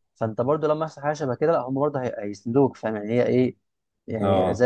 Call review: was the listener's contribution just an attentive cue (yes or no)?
no